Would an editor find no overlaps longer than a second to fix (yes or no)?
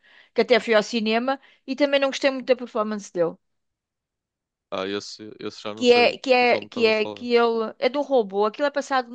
no